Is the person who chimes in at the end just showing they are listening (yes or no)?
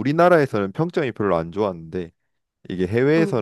yes